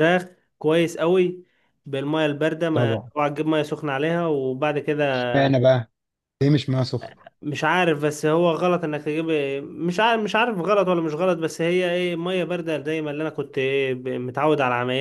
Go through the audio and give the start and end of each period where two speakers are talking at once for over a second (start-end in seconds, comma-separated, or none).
none